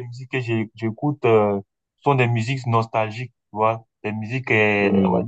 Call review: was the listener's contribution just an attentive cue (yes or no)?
yes